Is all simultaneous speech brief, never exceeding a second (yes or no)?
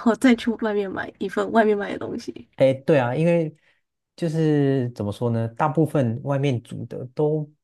yes